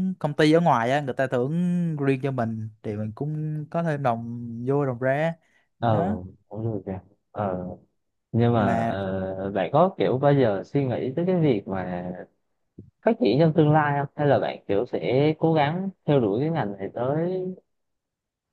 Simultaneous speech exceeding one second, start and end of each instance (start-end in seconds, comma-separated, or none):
none